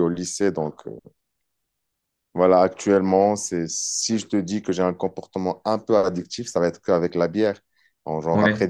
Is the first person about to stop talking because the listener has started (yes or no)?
no